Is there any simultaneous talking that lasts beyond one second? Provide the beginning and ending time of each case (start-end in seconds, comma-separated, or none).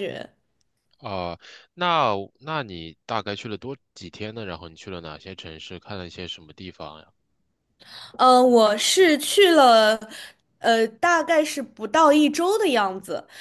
none